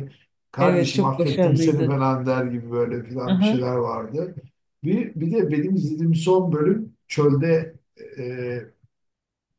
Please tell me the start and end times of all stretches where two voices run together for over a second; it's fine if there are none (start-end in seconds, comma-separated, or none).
0.6-2.0